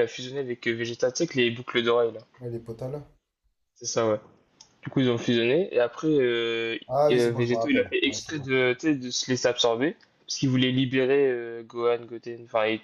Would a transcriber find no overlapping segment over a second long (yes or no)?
no